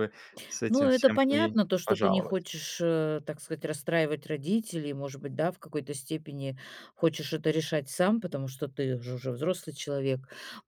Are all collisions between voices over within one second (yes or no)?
no